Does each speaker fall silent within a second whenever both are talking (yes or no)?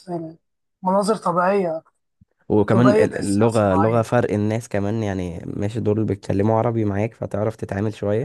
no